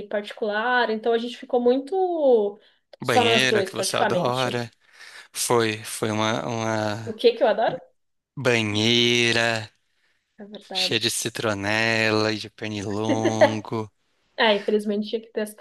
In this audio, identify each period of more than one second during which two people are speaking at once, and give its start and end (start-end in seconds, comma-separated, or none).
3.0-4.6